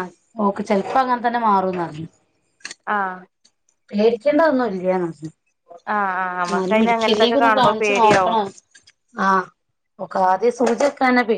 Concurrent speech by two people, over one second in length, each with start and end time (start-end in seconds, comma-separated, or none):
6.5-8.4